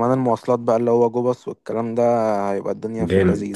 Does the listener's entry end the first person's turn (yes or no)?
yes